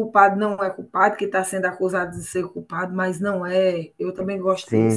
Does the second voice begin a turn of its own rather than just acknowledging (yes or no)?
yes